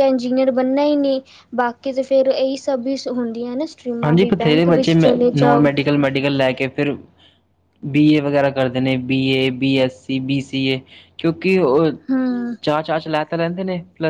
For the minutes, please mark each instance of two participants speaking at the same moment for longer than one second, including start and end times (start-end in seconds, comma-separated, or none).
4.0-5.7